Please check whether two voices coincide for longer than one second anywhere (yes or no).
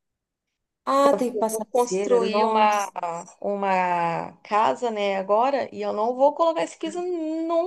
yes